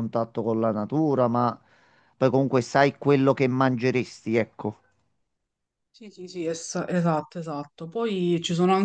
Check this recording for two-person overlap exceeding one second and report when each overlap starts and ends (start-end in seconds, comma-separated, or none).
none